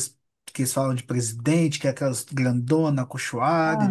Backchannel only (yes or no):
yes